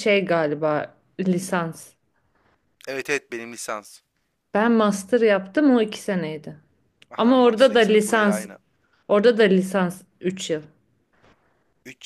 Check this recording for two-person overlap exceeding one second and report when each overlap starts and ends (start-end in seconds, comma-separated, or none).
7.2-8.5